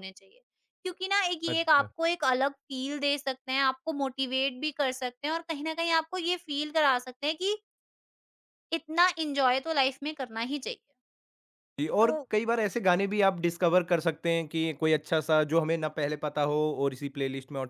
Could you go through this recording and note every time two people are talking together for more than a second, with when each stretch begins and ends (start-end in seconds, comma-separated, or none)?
none